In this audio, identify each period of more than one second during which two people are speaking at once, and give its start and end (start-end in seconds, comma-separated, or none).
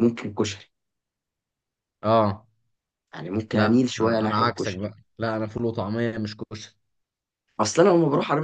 3.5-4.9